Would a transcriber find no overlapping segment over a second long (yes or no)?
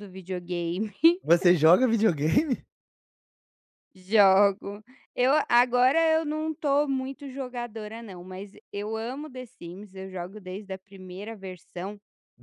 yes